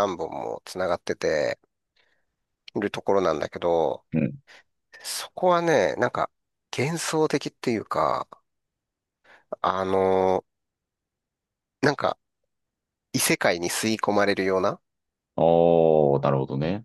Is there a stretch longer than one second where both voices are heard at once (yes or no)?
no